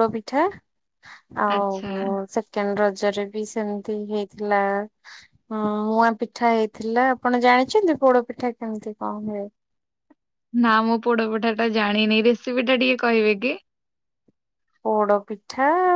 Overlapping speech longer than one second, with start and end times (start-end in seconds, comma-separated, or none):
none